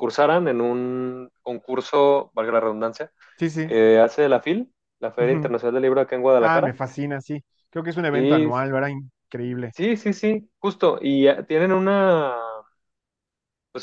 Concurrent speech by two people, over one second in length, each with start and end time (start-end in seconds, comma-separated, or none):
none